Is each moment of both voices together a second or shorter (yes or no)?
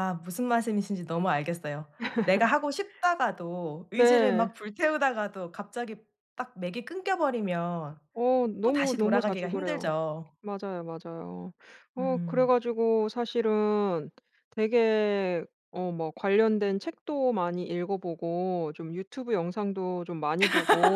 no